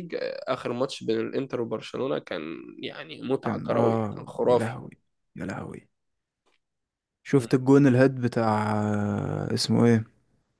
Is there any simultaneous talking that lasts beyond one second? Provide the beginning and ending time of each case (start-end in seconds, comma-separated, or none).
3.4-4.8